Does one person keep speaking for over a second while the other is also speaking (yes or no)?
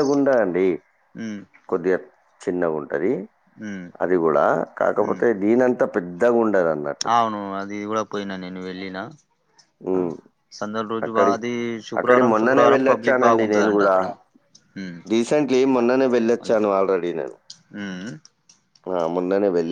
yes